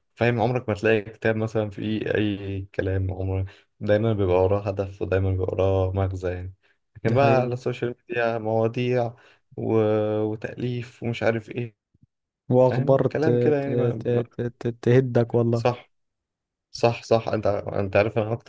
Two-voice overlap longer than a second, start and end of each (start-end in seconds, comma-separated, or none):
12.6-14.2